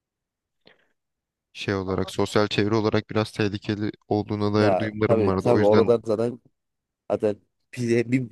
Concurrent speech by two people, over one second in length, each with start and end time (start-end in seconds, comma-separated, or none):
4.6-6.0